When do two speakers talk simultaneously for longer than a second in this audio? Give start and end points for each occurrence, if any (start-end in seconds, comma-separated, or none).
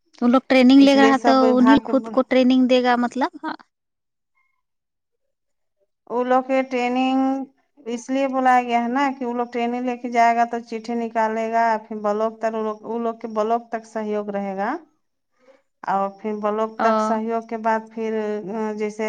0.8-2.2